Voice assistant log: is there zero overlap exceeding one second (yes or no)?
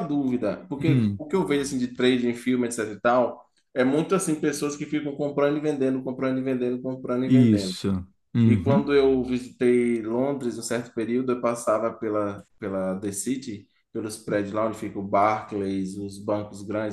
yes